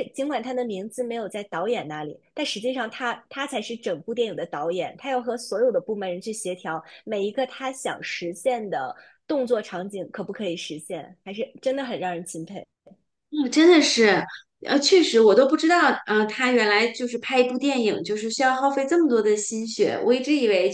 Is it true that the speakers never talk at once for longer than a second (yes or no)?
yes